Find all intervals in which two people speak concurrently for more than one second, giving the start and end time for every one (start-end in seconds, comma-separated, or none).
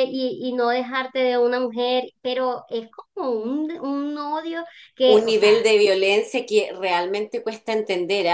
none